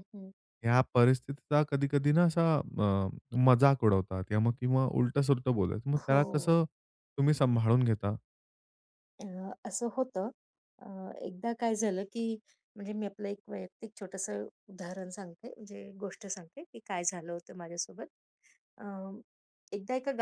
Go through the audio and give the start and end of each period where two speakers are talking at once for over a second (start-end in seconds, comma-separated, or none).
none